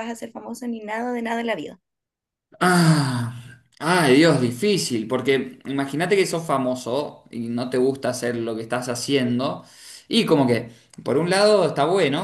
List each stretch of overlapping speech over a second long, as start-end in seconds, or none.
none